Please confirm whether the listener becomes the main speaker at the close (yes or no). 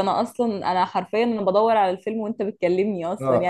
yes